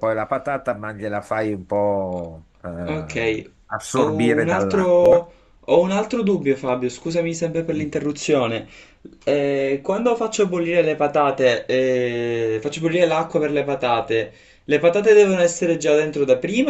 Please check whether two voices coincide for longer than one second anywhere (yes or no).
yes